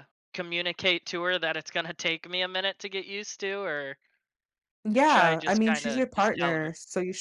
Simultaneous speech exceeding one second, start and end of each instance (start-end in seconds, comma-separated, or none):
5.1-6.7